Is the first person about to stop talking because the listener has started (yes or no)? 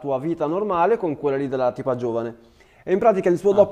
no